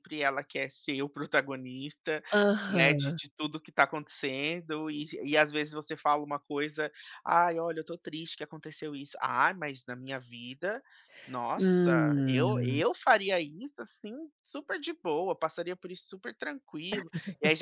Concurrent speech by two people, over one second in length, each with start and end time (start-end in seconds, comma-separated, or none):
11.6-12.8